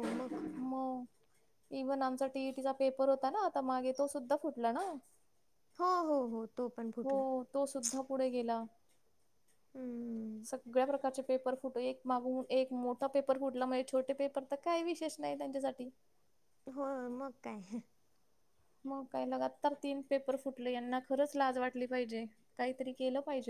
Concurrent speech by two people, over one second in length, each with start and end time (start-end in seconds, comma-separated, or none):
none